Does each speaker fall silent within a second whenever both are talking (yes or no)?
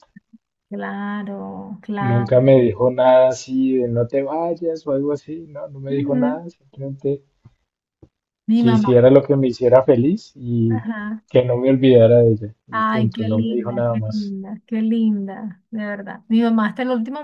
no